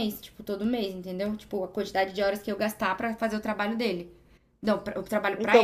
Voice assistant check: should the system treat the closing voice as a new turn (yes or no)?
yes